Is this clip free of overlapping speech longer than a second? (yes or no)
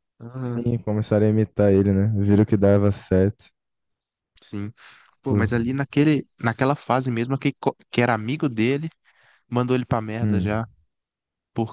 yes